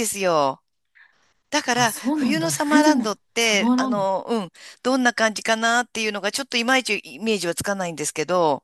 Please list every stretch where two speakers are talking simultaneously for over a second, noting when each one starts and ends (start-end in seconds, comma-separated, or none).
1.7-4.1